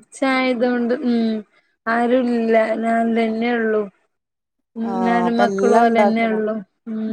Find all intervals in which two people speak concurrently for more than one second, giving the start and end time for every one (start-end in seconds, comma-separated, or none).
4.9-6.4